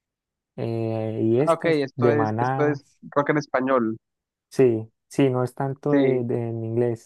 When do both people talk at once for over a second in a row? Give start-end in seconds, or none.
1.4-2.8